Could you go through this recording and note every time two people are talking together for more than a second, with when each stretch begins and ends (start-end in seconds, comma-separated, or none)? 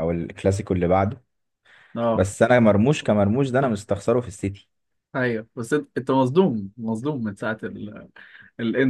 none